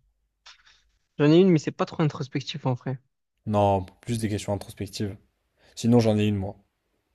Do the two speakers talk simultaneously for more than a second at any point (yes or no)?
no